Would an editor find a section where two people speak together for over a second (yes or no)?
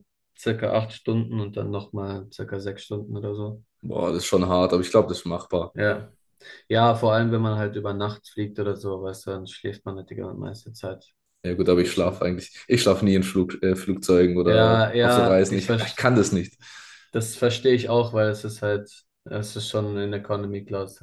yes